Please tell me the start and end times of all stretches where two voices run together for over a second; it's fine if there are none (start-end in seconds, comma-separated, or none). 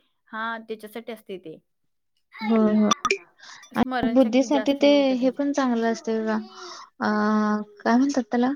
4.2-5.9